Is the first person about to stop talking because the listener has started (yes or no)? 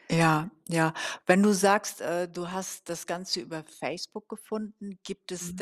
no